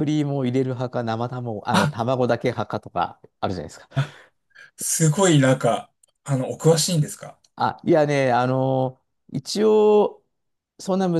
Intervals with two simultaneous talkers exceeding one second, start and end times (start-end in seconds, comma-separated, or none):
none